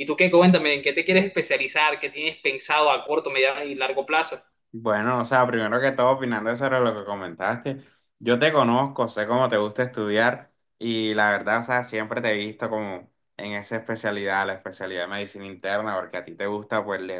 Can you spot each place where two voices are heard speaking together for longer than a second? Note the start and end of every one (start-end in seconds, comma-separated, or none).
none